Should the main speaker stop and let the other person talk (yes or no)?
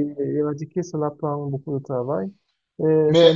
no